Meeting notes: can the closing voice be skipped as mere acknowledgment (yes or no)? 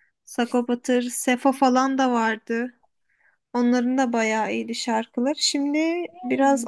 yes